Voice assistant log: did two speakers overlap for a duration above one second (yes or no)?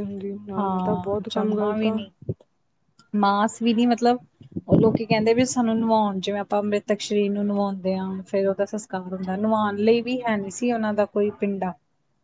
yes